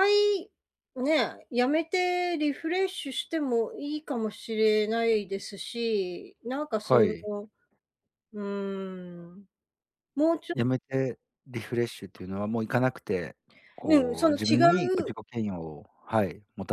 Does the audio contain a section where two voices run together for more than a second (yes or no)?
yes